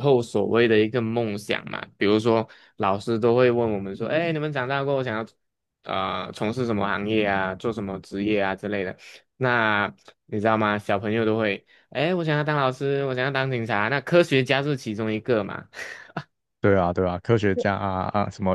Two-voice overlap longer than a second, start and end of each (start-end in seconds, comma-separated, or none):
none